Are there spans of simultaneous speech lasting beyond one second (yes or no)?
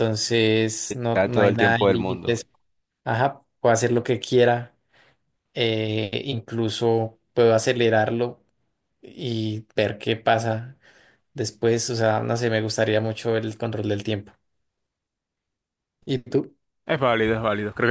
yes